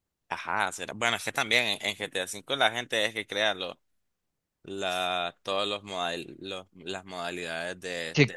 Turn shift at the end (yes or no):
yes